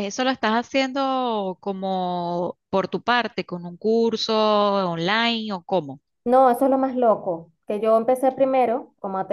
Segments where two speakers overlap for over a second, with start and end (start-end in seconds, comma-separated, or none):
none